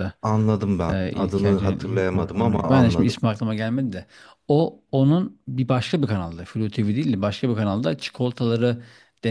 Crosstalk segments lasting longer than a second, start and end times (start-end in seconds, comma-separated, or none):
0.9-3.2